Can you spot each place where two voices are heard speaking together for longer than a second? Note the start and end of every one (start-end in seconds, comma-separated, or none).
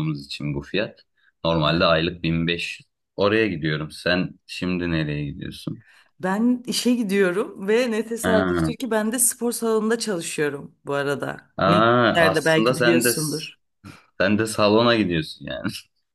11.6-13.1